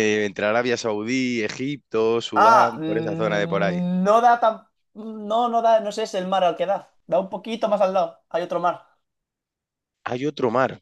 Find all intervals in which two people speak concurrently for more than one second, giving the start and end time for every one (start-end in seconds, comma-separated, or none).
2.4-3.8